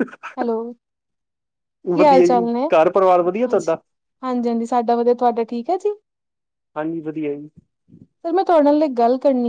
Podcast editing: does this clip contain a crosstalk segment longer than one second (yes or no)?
yes